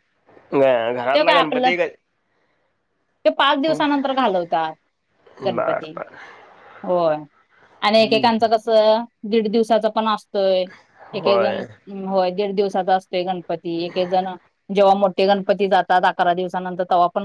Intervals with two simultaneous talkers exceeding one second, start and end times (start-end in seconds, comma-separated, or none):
none